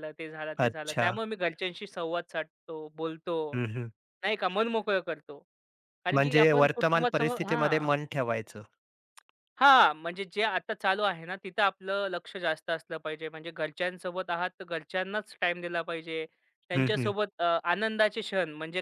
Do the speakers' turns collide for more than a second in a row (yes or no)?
yes